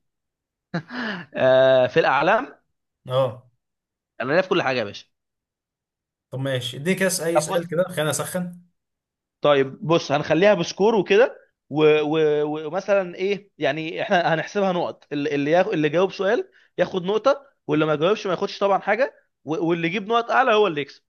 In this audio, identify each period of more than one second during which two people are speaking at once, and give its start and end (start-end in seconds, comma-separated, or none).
none